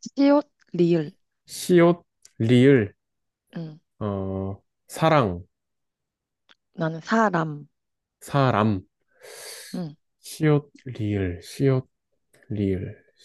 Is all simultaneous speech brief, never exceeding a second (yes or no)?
yes